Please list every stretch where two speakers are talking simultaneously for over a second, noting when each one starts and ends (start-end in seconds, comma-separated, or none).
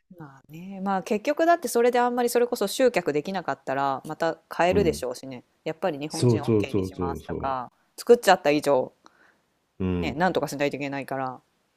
6.1-7.6